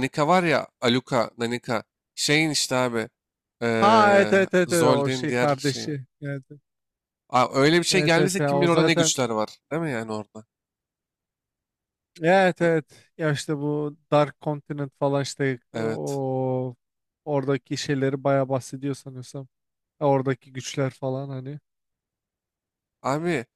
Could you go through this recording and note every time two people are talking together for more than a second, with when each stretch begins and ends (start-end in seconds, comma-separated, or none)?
3.8-5.9, 7.9-9.1